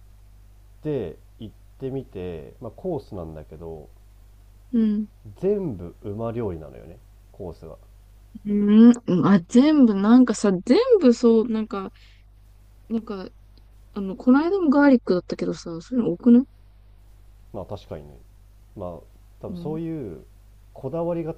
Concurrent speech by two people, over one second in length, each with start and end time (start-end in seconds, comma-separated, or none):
none